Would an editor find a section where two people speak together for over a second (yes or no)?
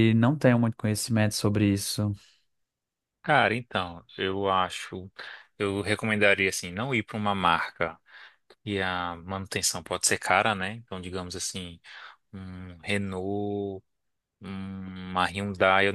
no